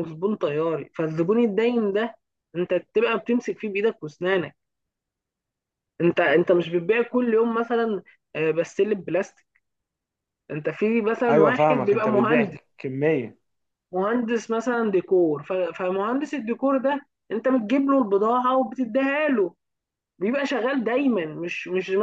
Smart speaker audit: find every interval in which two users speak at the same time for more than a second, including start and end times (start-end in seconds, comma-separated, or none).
11.3-12.6